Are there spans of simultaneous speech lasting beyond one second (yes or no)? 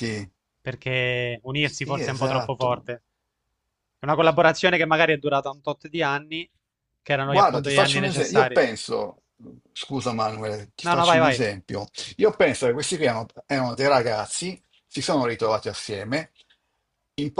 yes